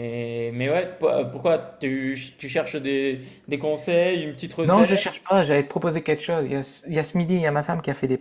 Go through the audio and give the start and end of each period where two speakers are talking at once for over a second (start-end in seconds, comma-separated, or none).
none